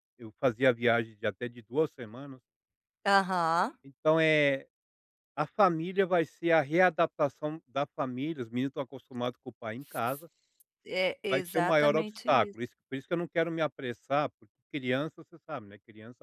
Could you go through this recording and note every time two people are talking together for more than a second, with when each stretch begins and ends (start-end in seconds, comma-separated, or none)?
11.3-12.6